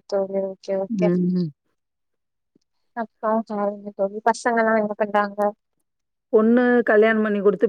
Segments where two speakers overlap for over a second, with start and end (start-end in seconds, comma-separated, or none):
none